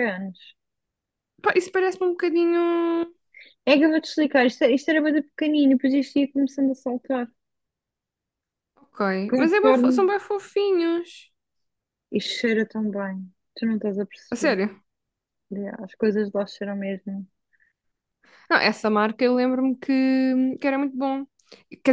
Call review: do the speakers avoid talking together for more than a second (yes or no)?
yes